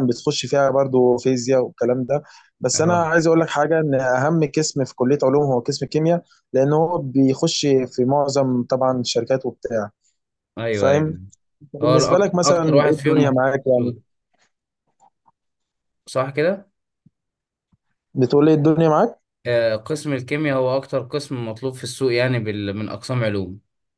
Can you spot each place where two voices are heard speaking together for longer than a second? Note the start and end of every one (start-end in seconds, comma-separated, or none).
11.8-14.0